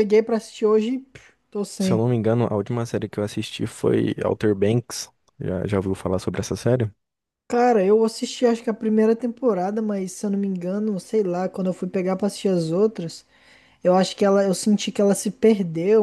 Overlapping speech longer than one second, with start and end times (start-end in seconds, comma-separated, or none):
none